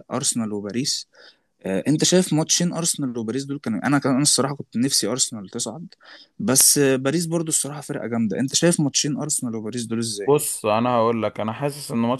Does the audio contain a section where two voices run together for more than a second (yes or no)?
no